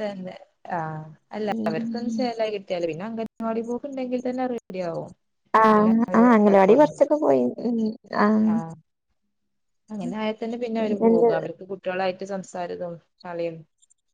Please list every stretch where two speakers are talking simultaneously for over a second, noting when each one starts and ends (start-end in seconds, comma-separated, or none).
none